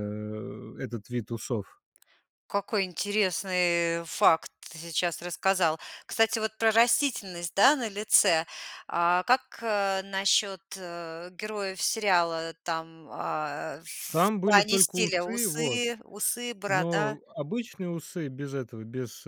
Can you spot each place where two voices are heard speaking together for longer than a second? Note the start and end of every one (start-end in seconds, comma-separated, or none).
14.4-15.8